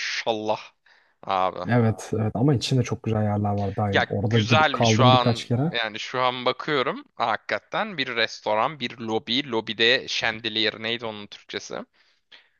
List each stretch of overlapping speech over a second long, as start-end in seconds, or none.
3.9-5.7